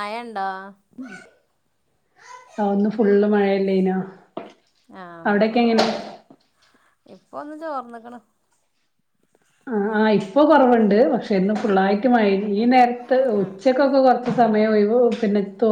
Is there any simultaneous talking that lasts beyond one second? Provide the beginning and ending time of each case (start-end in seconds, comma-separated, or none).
none